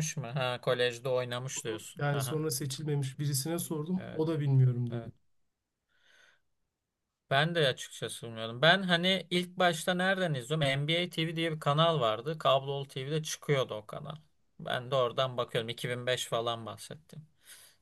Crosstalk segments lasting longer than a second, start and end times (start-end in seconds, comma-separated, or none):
none